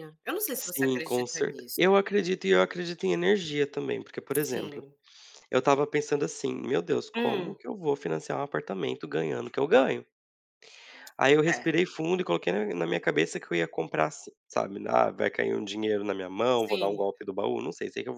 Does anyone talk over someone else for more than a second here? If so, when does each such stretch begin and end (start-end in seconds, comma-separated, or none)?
0.6-1.8